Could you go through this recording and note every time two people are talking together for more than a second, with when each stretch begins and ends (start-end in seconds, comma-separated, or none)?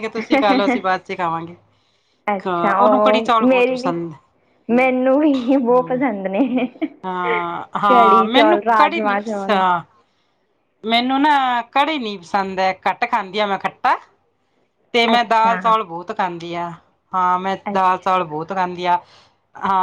2.5-3.9, 7.9-9.4